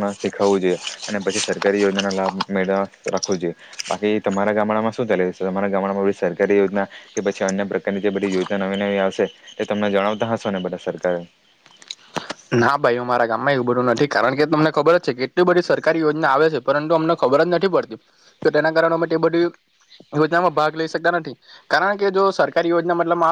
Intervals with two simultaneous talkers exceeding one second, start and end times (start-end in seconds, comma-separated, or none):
none